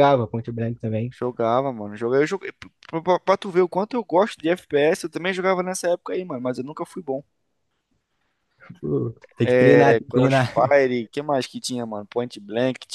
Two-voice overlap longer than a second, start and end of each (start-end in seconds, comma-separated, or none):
9.4-10.7